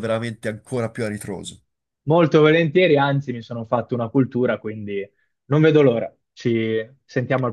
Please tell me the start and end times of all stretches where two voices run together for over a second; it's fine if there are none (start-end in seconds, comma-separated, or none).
none